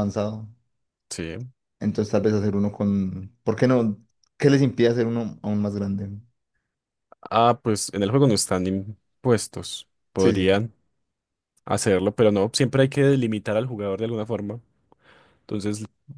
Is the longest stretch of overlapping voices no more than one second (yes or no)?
yes